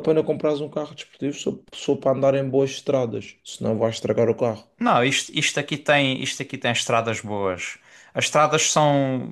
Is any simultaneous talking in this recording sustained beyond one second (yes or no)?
no